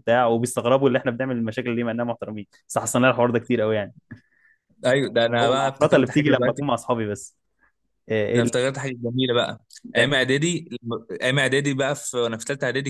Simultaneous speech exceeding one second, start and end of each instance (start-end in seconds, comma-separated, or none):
5.4-6.6